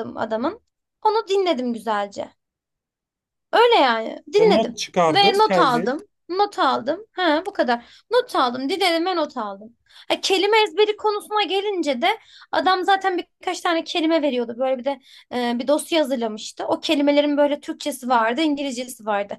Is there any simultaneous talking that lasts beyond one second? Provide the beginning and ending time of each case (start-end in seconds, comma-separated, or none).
4.4-6.0